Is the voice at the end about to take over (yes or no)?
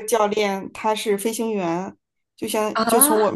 no